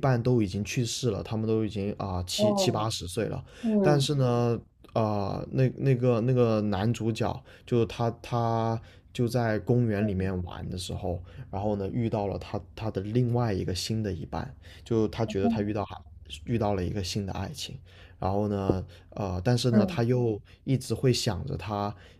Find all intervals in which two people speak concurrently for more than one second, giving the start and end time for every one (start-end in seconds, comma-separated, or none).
none